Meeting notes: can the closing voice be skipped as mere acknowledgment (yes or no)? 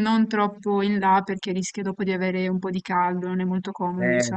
no